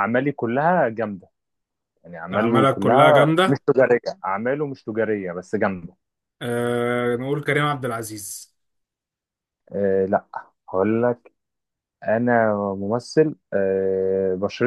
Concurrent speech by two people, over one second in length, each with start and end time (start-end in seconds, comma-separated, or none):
2.3-3.6